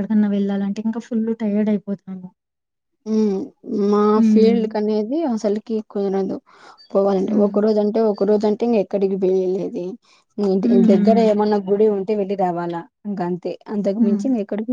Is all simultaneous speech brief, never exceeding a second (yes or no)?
yes